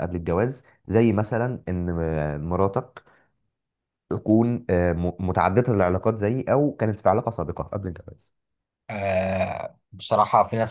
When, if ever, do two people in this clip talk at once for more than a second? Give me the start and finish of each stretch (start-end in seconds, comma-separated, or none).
none